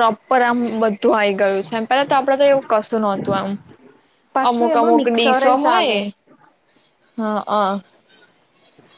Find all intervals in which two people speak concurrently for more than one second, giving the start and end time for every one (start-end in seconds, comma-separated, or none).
4.5-6.0